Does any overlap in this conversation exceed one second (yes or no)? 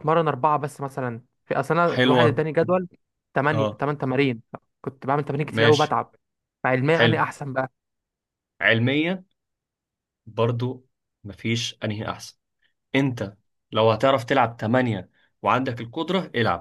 no